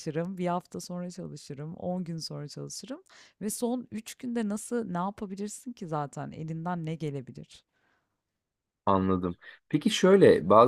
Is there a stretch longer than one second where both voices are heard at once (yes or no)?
no